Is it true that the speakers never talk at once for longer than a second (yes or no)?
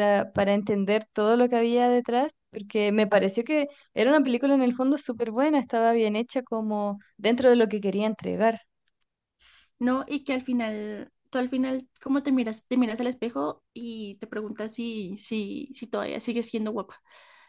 yes